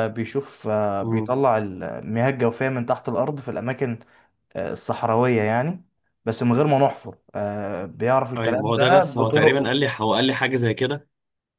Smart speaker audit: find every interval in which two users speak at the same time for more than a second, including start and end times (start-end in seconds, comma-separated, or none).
8.4-9.6